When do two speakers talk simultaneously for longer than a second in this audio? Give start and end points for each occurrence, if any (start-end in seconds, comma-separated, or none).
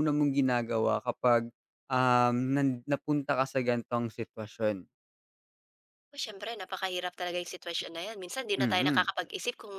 none